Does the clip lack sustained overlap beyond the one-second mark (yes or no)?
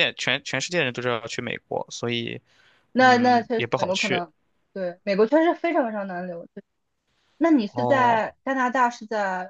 no